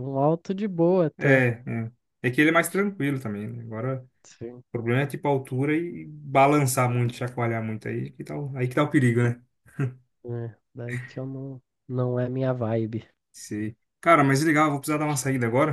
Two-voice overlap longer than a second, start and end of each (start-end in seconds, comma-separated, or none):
none